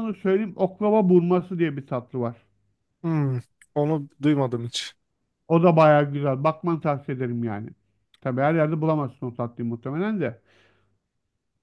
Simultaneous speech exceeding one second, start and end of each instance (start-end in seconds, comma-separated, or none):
none